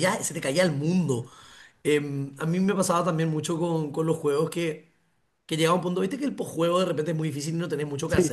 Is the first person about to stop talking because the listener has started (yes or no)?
yes